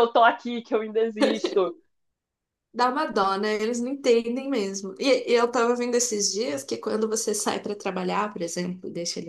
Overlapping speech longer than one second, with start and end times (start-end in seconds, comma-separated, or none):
none